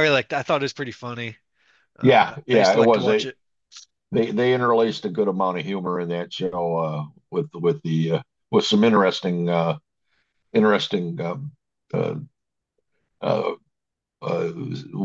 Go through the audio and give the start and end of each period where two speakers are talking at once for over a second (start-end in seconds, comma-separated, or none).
2.0-3.3